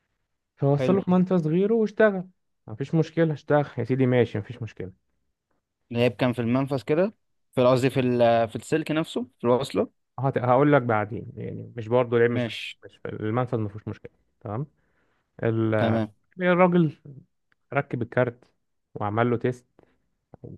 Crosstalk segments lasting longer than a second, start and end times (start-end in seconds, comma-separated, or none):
none